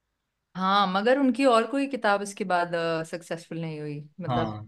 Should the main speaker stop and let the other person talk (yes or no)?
no